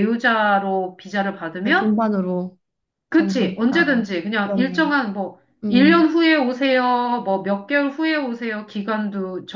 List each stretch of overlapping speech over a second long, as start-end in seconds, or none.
3.1-4.9